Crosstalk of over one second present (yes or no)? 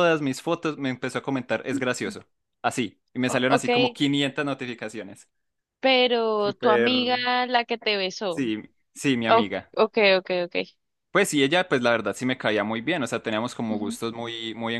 no